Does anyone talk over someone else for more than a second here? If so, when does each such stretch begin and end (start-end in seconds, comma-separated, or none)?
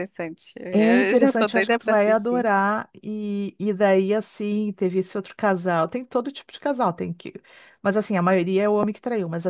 0.7-2.5